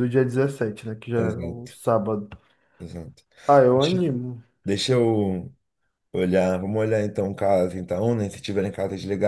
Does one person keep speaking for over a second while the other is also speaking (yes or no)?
no